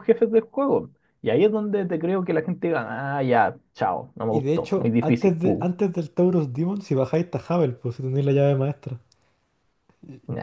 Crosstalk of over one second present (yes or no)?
yes